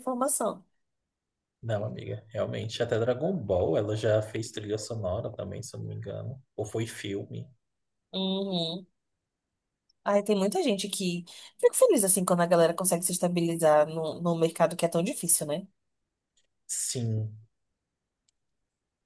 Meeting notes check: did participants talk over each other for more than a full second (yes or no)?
no